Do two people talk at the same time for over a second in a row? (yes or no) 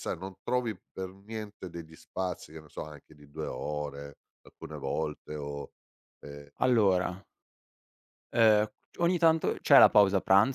no